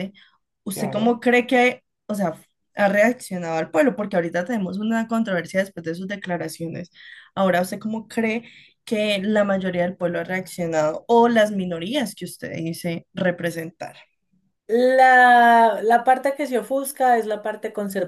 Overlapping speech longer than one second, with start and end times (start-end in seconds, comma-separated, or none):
none